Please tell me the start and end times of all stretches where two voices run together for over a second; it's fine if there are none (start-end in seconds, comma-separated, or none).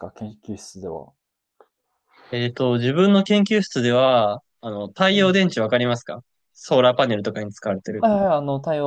none